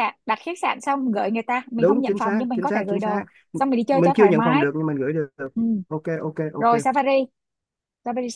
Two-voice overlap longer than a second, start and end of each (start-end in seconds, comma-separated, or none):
1.8-4.7